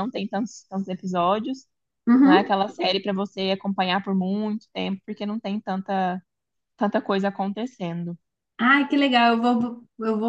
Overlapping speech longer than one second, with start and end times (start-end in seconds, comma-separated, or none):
none